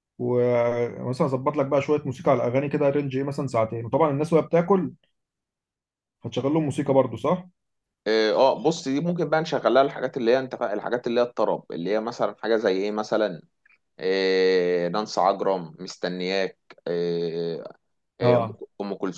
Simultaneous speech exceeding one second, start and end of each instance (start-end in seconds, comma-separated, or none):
none